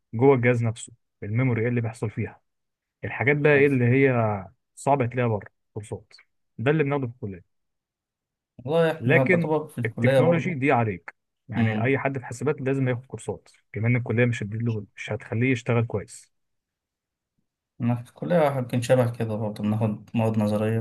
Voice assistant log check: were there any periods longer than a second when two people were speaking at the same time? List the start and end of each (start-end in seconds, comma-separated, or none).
9.0-10.6